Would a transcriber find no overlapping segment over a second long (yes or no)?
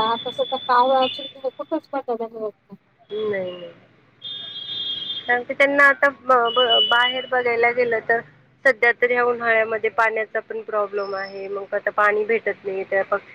yes